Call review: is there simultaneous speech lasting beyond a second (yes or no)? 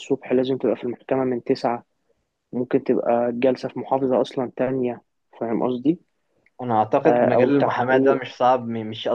yes